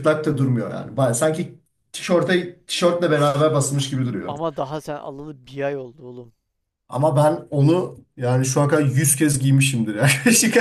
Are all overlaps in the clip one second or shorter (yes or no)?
yes